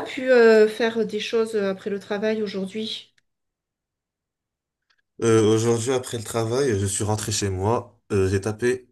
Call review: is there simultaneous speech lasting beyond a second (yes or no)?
no